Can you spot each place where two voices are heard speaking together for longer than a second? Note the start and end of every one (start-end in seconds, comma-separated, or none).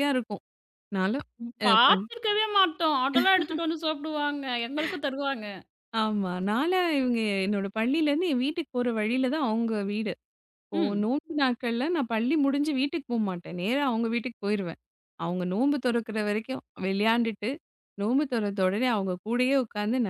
none